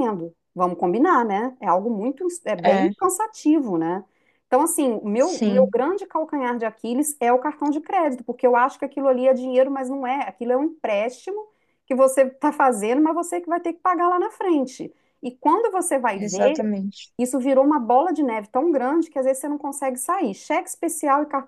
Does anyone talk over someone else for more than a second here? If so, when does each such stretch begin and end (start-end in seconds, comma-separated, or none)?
none